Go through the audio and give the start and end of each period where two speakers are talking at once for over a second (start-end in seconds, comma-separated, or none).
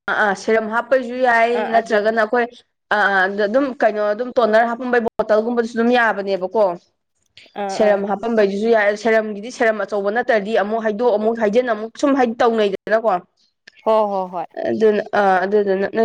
none